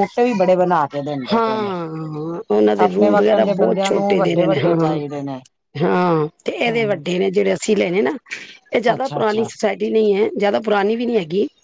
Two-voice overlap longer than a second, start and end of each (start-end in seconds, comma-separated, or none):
2.8-5.0